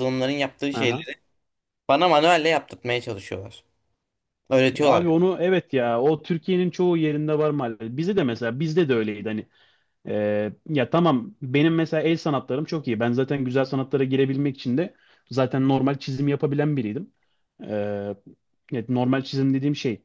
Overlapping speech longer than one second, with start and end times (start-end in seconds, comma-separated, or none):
none